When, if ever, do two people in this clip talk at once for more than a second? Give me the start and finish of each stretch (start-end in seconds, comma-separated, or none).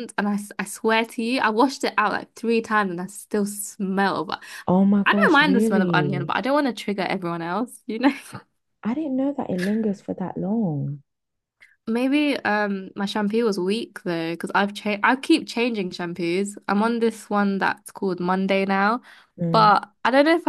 5.0-6.3